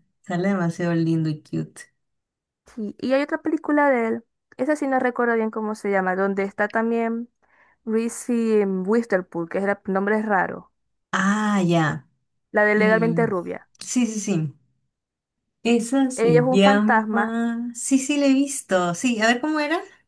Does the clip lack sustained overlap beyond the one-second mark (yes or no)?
no